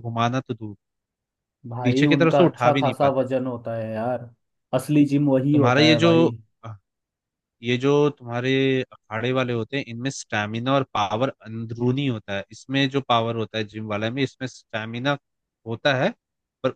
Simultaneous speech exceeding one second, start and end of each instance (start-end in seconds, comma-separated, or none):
1.8-3.2